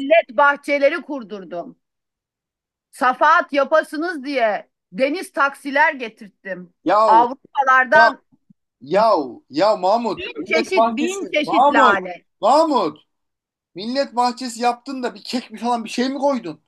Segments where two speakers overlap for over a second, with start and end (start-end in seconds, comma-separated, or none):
10.1-12.0